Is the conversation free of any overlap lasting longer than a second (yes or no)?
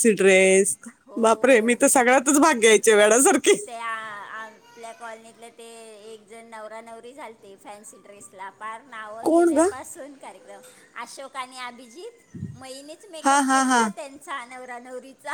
yes